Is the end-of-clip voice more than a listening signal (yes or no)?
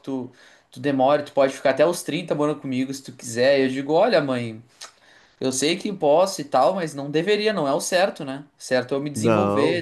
no